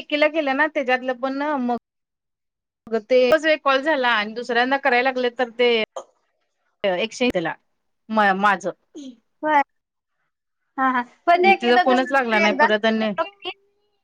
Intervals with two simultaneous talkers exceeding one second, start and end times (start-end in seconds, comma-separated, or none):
11.4-13.1